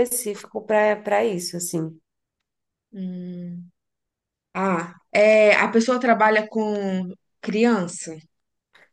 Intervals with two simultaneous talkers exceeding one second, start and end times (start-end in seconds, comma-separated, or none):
none